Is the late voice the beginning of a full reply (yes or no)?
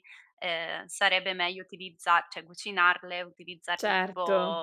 no